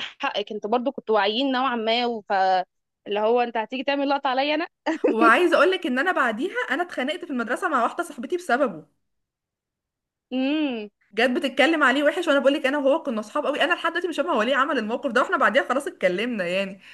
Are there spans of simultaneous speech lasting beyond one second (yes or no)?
no